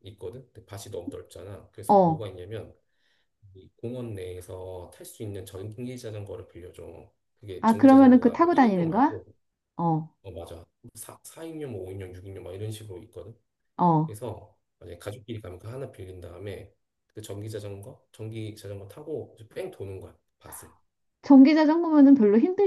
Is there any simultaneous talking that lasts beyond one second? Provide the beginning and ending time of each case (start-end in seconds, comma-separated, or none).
7.6-9.2